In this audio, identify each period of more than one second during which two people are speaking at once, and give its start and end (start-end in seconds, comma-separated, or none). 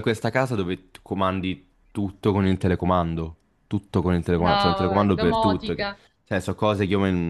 4.4-6.0